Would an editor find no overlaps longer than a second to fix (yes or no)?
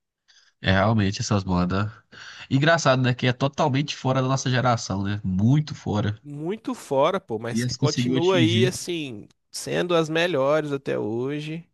no